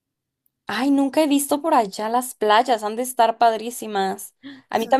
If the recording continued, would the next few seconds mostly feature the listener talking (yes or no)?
no